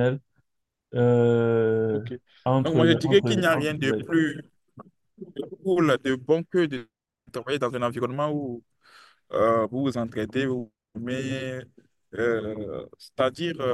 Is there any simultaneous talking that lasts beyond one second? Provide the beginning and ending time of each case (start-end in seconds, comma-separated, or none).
2.6-4.1